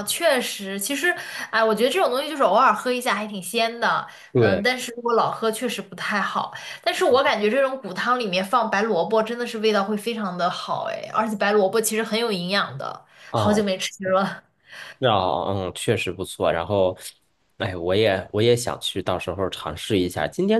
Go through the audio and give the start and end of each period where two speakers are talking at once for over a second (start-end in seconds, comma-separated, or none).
none